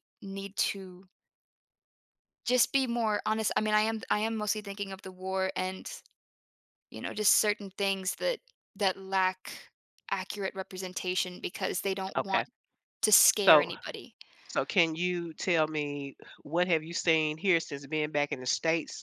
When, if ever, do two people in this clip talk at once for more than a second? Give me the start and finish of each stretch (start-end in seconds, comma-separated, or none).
none